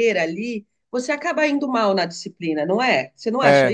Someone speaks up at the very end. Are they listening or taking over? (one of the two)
taking over